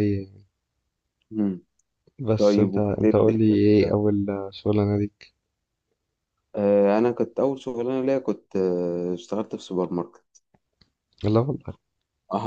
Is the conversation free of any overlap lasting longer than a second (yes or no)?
no